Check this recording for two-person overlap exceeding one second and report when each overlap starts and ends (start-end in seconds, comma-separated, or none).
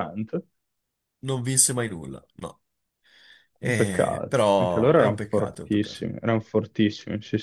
3.6-6.0